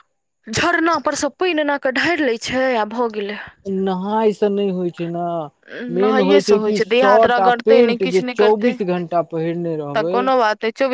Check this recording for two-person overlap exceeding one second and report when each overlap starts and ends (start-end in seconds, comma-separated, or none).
6.0-8.7